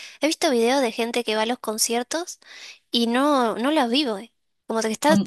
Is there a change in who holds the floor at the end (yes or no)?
no